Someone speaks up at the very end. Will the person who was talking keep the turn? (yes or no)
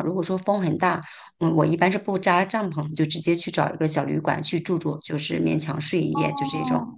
no